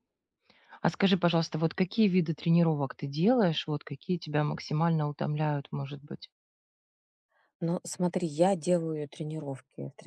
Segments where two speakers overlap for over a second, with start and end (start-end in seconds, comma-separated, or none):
none